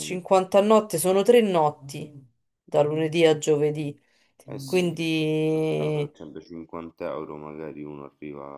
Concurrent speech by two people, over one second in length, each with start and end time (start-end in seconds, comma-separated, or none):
4.5-6.1